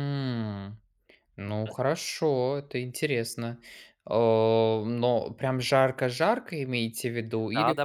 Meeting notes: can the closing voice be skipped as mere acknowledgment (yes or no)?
no